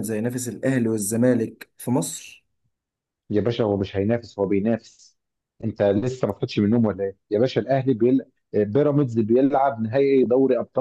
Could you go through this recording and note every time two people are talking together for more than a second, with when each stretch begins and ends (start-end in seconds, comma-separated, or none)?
none